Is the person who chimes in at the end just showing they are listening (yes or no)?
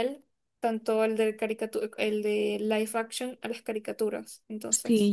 no